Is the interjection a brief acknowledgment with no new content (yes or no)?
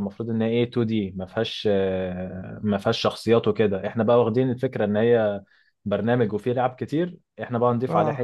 yes